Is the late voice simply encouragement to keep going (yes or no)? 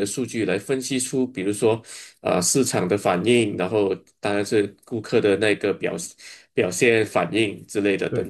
no